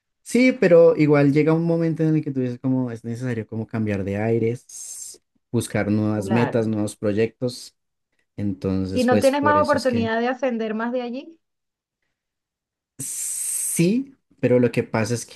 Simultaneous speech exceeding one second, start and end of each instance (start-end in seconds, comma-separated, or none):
8.9-10.1